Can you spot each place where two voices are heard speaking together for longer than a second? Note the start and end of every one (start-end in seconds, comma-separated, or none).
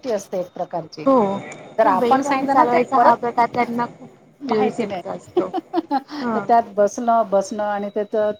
1.8-3.4